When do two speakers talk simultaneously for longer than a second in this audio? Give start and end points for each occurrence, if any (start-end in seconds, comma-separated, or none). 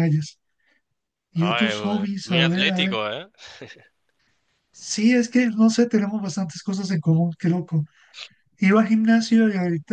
1.3-3.0